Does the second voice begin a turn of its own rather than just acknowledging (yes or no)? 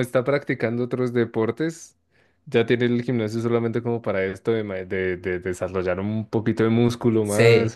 no